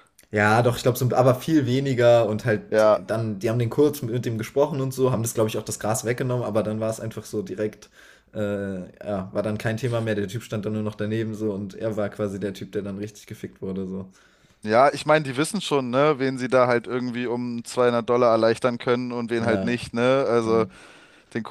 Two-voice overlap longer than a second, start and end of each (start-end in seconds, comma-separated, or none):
none